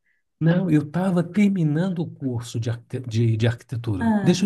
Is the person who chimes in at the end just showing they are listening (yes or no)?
yes